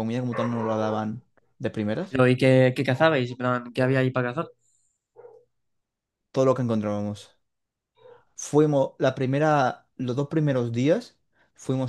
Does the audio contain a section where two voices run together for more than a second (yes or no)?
no